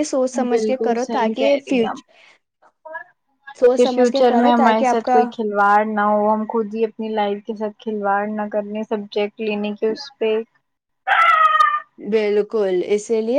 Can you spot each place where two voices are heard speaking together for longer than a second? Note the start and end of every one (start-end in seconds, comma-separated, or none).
3.7-5.2